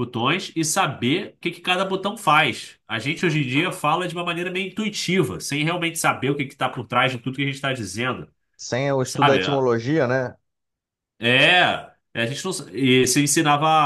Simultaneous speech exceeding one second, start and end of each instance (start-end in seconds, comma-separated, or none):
none